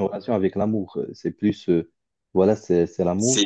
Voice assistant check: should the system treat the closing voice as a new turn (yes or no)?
no